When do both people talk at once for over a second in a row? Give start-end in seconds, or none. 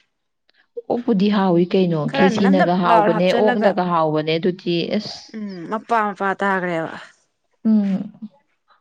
2.1-3.7